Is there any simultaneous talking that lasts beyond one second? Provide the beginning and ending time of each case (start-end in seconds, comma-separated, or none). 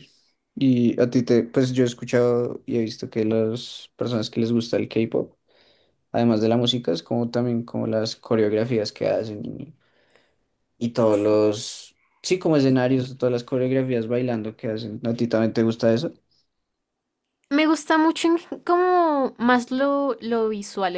none